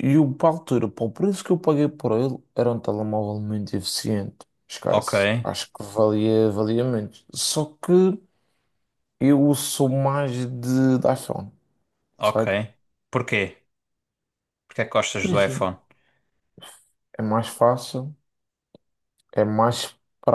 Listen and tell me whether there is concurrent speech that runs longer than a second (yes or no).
no